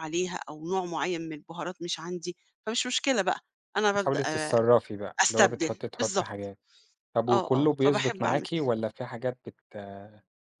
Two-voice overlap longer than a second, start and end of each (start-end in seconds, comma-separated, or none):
5.2-6.5, 7.3-8.7